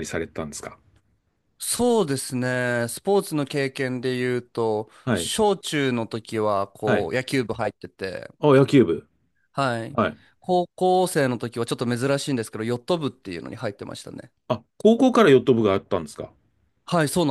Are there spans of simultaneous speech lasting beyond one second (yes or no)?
no